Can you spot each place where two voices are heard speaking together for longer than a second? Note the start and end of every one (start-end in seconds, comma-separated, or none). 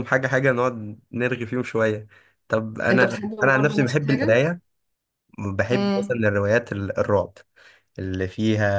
2.9-4.4